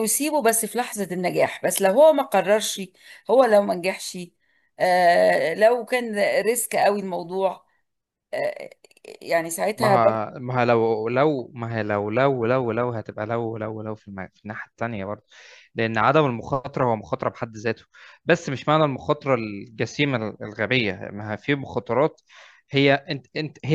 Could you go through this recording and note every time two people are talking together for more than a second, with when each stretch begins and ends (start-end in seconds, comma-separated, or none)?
none